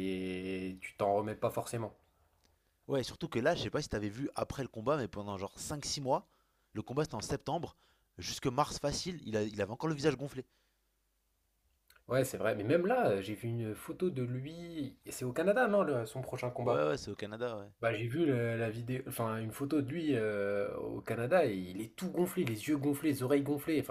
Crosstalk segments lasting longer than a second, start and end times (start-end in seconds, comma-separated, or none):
none